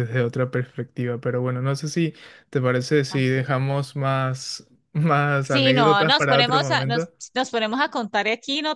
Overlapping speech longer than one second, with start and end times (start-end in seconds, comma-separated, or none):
5.5-7.1